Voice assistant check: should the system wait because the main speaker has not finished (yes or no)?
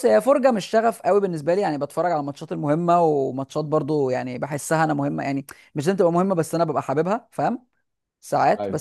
yes